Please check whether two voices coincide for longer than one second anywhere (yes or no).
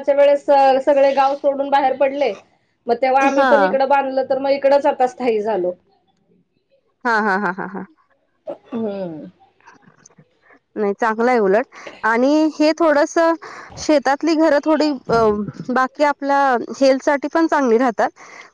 no